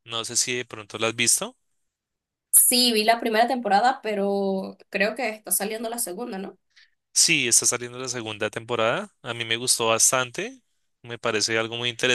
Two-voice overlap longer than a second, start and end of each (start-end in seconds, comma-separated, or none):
none